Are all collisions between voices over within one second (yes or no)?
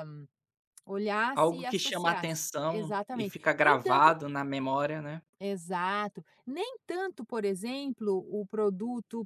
no